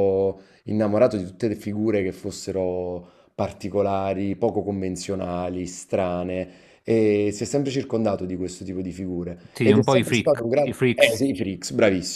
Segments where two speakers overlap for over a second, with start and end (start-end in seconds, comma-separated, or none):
9.5-11.2